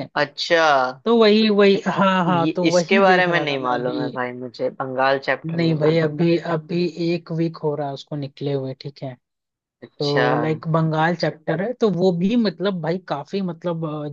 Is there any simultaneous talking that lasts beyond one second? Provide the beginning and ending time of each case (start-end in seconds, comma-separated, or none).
2.3-4.1